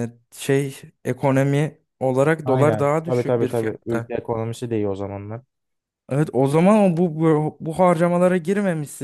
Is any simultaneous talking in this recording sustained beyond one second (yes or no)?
yes